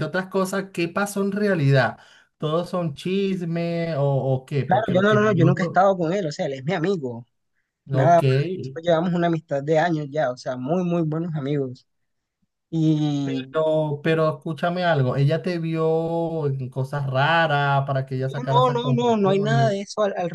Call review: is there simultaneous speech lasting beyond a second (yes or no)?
yes